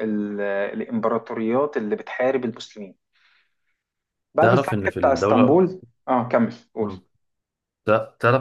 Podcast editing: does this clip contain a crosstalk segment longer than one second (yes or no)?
yes